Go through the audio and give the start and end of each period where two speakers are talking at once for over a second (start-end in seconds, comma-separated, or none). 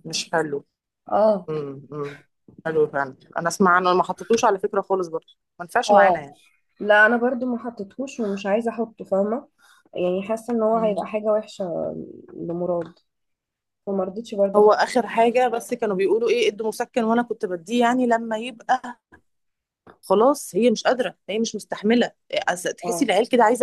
none